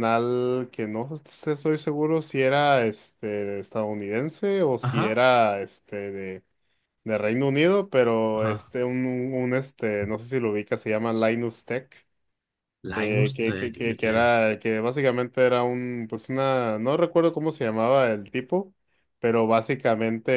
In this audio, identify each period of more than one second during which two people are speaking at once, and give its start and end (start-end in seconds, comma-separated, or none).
12.9-14.5